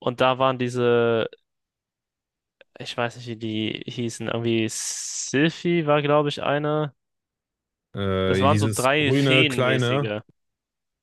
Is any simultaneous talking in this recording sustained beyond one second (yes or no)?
yes